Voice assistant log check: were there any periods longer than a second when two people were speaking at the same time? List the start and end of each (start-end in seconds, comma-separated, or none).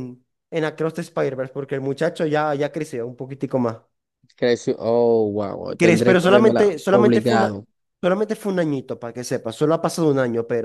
5.8-7.6